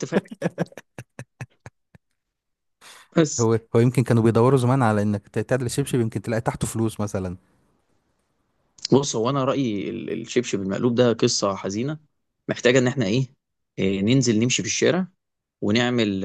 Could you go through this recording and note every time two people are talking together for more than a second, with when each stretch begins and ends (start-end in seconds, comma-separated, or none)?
none